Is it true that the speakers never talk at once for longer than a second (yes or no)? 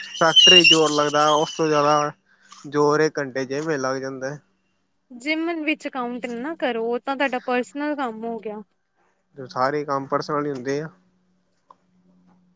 yes